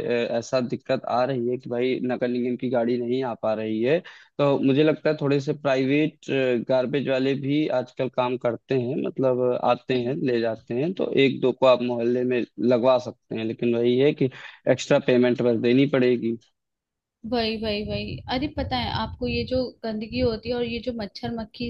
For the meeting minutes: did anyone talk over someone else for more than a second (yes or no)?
no